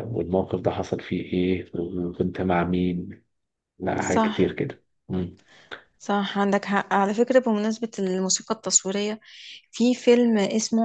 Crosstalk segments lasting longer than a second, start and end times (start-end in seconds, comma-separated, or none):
none